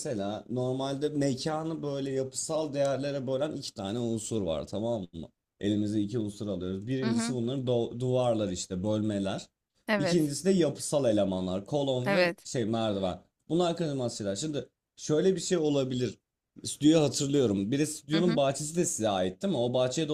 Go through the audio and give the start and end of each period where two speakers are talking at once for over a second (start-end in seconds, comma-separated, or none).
none